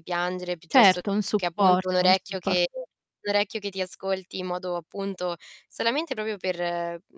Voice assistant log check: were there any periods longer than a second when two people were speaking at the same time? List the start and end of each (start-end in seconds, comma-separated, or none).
0.7-2.6